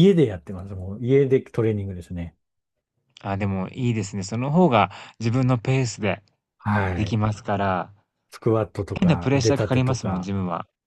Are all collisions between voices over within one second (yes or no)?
no